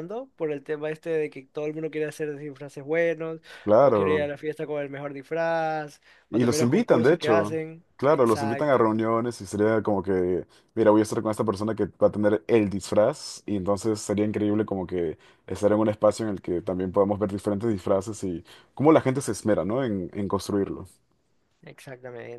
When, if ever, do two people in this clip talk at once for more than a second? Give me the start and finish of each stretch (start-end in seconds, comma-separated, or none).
6.3-8.9